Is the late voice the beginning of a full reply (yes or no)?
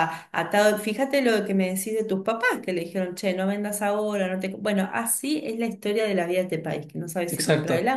no